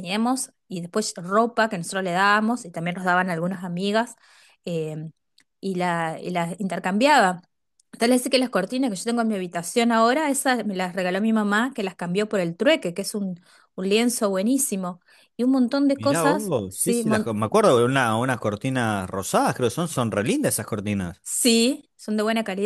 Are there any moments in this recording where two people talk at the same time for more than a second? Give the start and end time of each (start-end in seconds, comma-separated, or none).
16.0-17.3